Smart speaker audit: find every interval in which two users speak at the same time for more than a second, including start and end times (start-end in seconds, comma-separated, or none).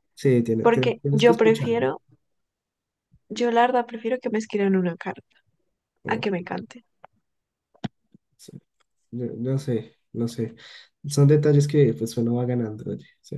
0.6-1.9